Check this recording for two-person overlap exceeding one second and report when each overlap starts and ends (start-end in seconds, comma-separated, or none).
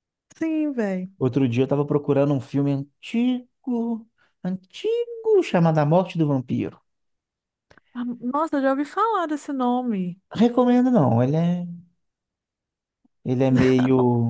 none